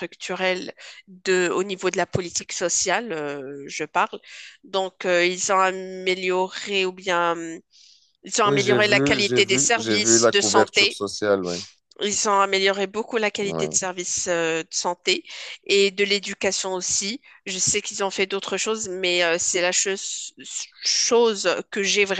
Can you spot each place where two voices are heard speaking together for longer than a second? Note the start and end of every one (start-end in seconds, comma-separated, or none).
8.4-11.0